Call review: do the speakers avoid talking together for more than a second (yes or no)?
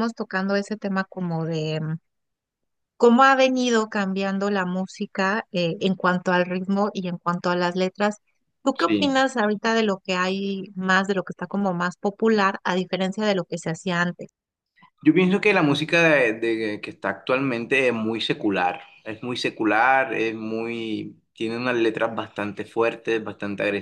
yes